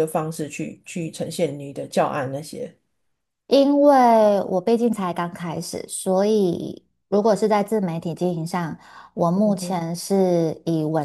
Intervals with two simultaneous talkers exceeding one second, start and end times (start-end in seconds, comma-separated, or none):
none